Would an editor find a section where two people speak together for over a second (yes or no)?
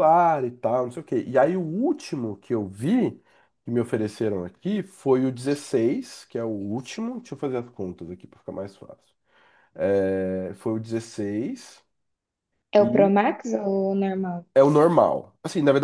no